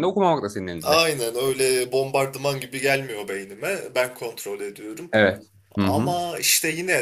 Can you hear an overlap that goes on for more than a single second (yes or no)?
no